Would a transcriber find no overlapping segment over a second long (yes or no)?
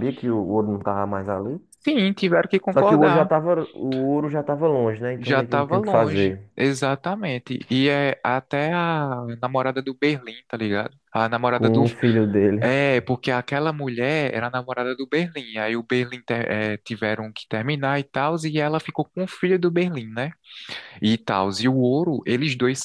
no